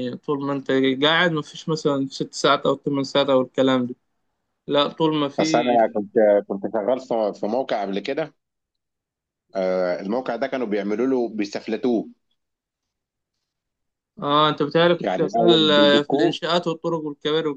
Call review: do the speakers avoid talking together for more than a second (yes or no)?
no